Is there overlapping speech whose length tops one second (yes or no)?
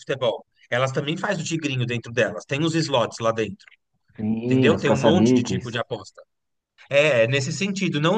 yes